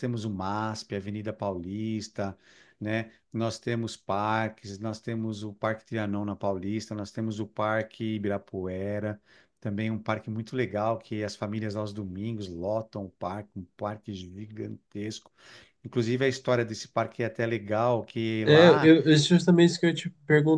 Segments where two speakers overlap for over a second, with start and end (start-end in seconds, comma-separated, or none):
none